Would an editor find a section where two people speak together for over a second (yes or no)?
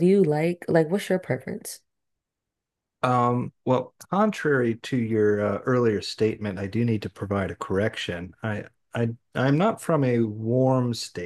no